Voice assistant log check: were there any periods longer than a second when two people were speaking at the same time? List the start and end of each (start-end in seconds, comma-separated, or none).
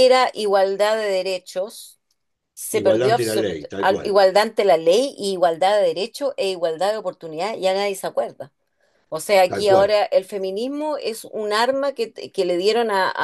2.7-4.2